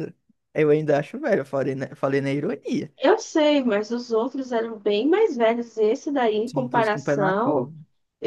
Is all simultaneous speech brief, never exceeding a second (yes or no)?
no